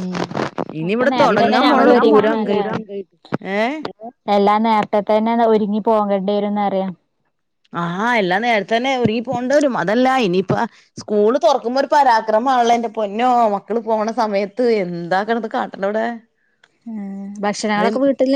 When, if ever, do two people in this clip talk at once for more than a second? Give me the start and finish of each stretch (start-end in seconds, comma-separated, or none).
0.9-2.6